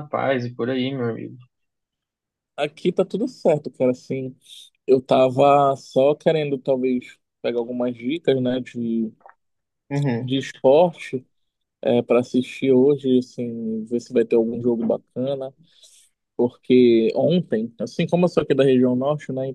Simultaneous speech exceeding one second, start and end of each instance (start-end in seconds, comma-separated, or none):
none